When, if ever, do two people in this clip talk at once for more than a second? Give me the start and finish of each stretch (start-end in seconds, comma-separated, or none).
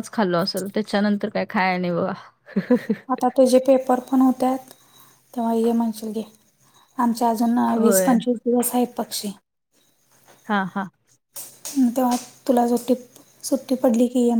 none